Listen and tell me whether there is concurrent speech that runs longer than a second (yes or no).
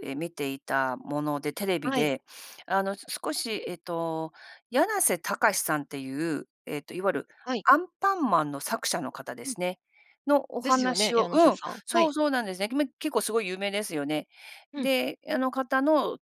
yes